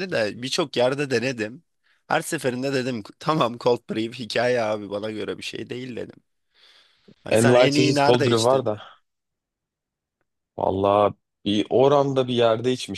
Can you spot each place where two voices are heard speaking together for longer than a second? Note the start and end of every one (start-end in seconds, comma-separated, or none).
7.4-8.7